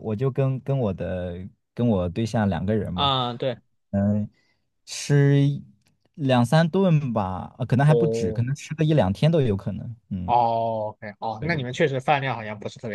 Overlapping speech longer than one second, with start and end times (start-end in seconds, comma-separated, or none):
none